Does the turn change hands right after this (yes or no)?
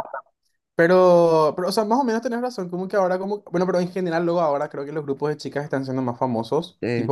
no